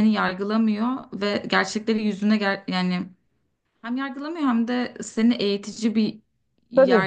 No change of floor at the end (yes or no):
yes